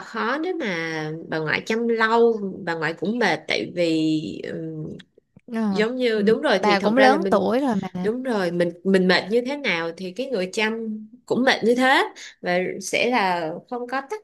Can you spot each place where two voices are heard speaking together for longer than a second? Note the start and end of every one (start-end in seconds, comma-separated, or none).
5.7-7.5